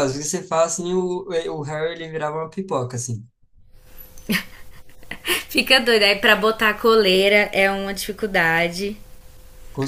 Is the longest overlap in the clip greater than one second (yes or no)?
no